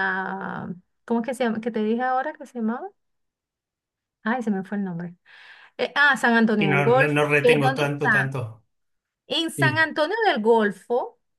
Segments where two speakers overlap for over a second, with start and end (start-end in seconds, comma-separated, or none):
6.6-8.3